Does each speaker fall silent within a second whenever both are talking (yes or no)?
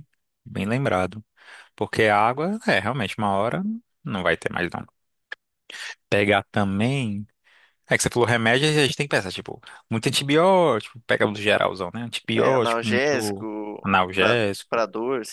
no